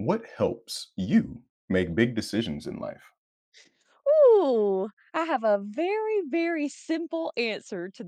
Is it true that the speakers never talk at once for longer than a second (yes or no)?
yes